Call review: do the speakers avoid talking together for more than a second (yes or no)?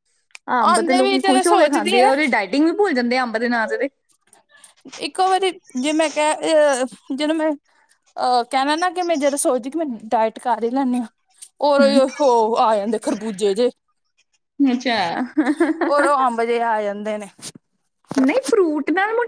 no